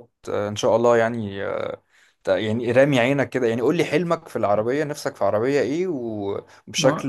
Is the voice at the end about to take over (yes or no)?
yes